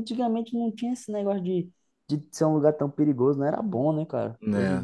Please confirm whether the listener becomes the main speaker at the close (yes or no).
yes